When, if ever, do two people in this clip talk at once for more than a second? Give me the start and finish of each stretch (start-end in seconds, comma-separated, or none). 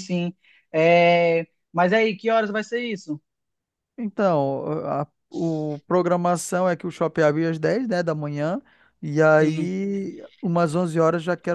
none